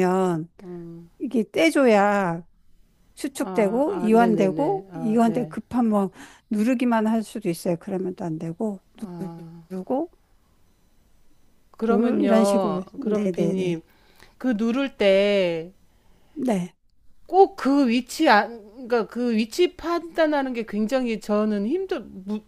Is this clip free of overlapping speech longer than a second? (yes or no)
no